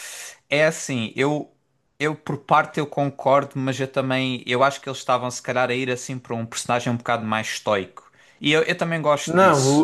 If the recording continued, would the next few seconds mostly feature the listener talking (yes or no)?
yes